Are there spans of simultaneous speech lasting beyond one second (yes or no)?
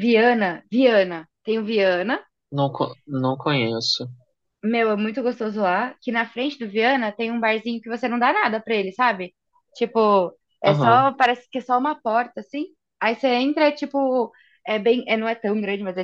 no